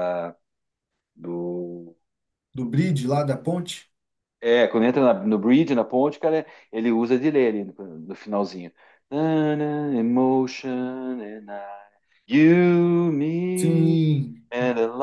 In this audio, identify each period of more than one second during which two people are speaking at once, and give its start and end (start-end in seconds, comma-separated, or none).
none